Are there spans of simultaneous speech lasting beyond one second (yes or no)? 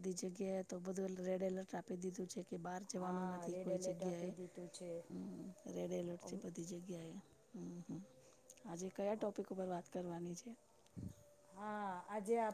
yes